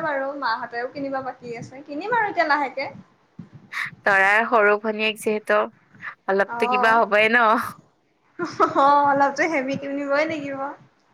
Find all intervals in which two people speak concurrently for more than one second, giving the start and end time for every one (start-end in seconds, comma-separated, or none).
none